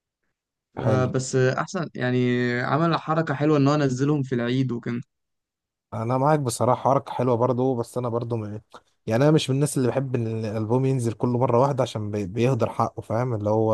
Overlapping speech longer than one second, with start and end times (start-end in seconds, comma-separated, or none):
none